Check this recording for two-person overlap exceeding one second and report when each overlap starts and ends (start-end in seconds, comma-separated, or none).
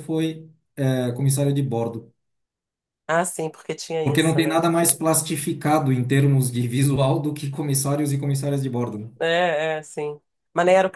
none